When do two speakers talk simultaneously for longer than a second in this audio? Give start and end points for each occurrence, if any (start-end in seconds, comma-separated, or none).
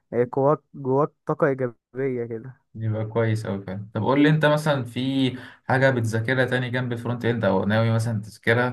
none